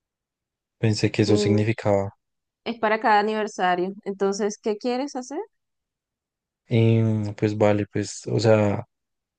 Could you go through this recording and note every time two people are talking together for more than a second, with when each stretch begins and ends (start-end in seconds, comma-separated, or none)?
none